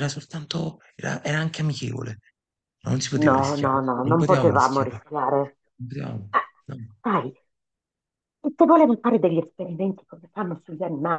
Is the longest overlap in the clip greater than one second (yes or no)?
yes